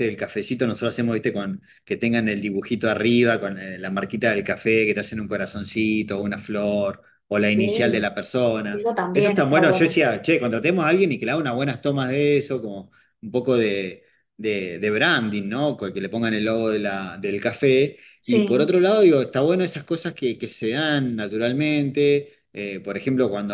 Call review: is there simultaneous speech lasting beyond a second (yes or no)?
yes